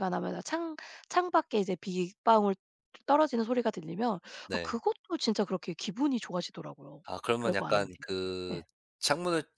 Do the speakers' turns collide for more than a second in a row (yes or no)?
no